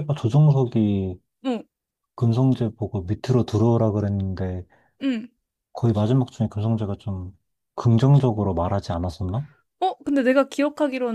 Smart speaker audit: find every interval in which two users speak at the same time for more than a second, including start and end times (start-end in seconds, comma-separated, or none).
none